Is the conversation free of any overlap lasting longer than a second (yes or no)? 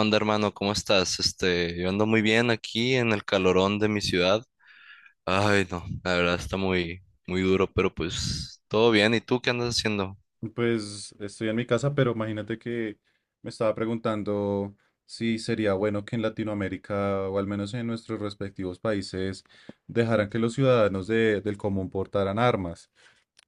yes